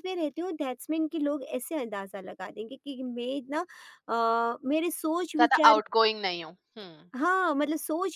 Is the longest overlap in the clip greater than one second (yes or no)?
no